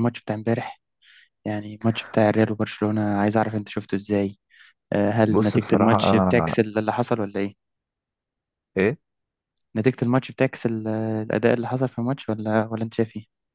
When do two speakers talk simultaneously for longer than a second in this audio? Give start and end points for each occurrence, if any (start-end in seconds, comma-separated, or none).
5.3-6.6